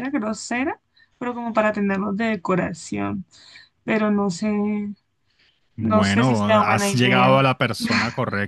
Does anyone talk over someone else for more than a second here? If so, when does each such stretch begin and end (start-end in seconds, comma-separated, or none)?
5.8-7.5